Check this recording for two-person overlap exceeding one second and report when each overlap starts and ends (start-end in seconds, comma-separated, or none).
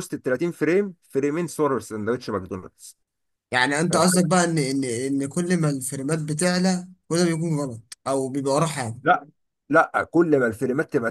none